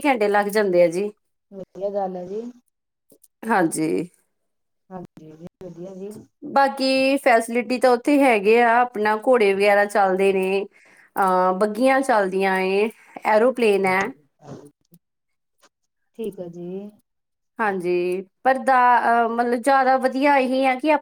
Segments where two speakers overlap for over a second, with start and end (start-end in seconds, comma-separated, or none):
none